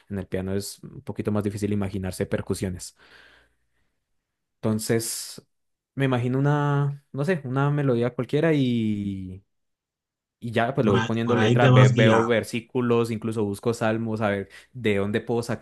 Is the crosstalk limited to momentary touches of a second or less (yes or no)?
no